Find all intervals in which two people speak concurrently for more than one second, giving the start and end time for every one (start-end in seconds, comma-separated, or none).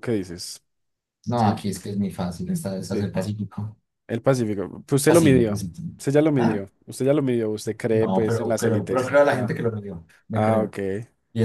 7.9-9.6